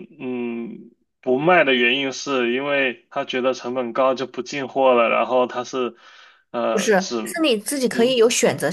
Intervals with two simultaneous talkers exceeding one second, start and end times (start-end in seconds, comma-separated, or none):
none